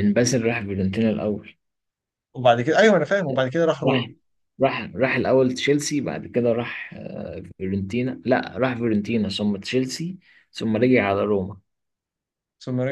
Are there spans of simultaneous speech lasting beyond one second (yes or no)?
no